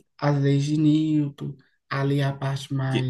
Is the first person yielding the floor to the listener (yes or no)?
no